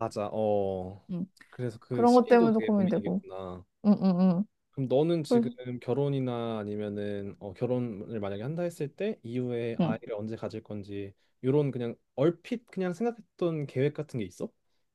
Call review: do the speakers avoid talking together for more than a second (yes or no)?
no